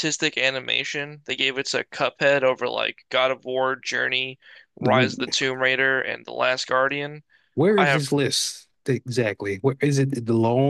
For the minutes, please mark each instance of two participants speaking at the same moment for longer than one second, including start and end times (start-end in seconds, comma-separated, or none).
none